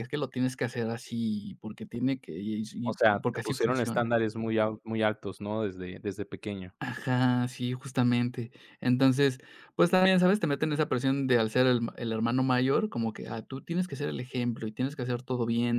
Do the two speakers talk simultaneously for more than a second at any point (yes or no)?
yes